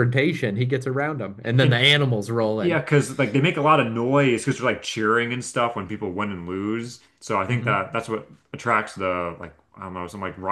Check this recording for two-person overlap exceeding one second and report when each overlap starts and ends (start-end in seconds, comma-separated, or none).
none